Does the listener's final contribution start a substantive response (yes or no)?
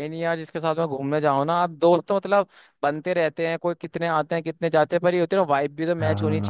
yes